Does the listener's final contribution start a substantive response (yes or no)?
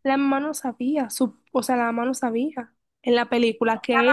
yes